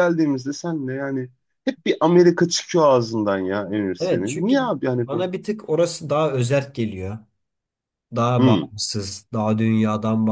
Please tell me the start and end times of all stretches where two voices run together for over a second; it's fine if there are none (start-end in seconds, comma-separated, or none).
4.0-5.3